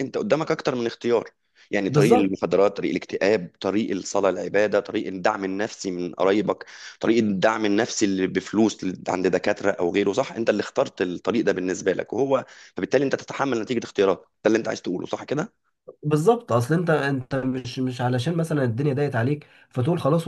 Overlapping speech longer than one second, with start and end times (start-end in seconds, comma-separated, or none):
none